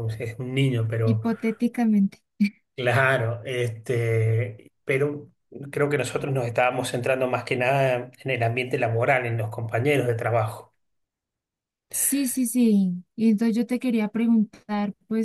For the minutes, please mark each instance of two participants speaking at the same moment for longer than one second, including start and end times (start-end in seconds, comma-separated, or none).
none